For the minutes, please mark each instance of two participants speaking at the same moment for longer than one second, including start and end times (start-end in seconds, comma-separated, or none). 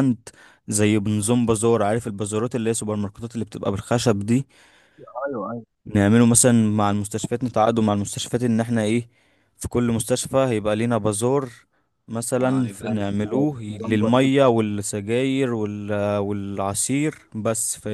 12.4-14.3